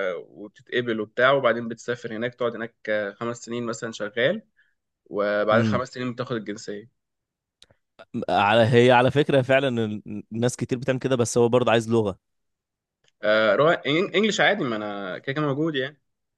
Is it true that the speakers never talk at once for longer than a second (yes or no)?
yes